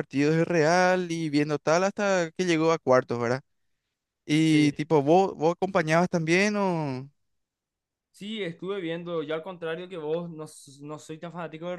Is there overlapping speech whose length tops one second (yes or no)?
no